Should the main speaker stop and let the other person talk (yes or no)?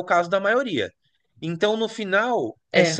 no